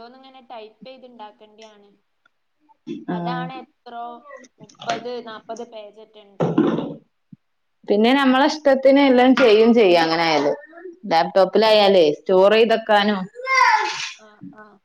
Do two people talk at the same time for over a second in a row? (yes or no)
no